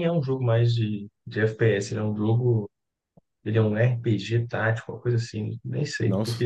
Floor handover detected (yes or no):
no